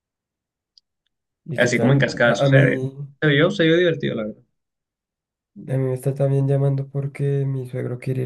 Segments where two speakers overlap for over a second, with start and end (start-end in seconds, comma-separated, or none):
1.5-2.9